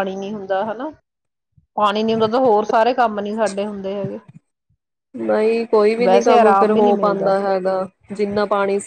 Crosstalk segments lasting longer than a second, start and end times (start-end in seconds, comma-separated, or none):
6.0-7.3